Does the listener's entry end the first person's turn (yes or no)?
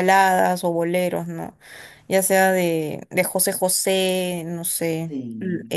no